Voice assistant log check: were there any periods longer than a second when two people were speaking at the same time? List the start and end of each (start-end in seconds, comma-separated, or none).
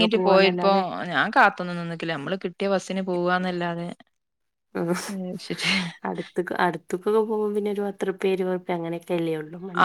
none